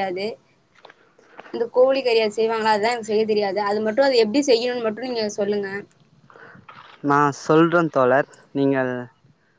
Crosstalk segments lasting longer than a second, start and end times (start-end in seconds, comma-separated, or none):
none